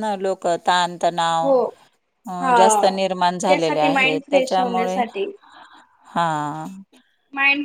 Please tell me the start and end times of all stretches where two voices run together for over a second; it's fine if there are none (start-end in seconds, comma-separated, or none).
3.5-5.0